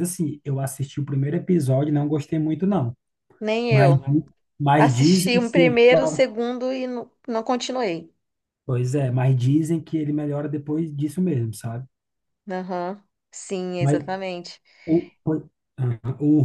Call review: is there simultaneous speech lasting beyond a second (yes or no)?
yes